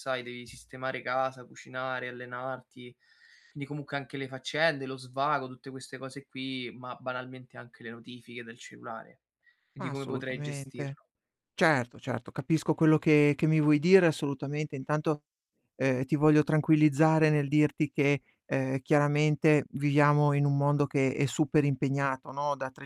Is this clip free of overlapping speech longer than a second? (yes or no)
no